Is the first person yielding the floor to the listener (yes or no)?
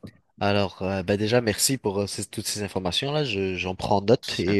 no